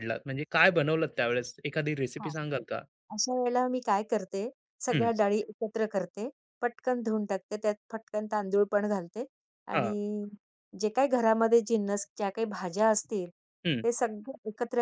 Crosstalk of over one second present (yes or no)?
no